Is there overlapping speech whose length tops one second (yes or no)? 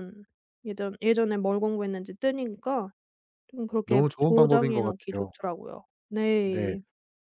yes